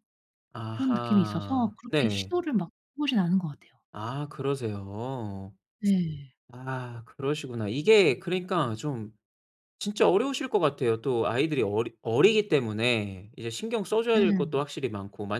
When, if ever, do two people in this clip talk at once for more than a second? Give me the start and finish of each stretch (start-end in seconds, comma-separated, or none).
0.7-2.3